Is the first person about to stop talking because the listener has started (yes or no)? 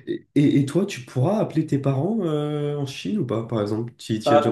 yes